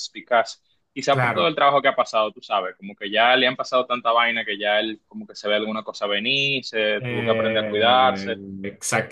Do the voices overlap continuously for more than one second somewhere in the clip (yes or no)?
yes